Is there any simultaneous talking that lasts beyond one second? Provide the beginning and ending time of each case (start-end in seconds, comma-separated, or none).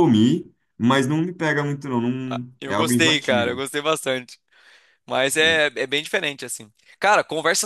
2.3-3.6